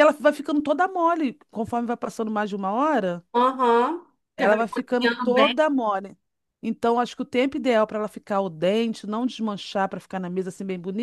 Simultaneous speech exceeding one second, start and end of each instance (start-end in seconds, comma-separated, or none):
4.4-5.6